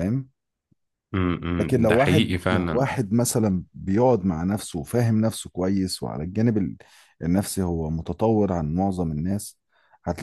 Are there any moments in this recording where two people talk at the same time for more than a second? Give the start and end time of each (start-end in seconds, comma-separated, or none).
1.6-2.9